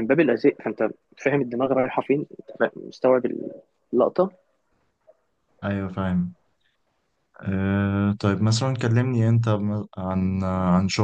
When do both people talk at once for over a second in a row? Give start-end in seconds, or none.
none